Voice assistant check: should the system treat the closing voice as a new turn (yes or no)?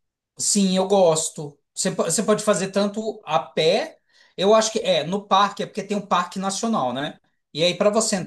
no